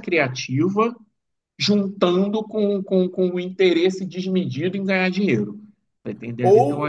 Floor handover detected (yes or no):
yes